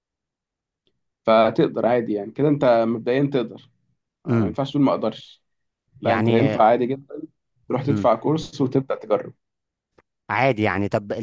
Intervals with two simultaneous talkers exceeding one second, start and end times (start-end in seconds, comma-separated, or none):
none